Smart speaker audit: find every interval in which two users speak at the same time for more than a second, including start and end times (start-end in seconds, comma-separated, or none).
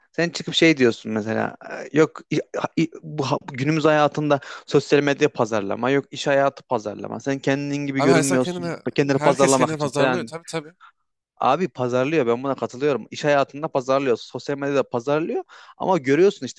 8.0-10.3